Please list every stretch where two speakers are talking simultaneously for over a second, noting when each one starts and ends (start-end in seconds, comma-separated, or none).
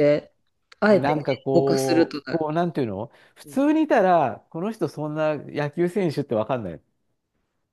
0.9-2.4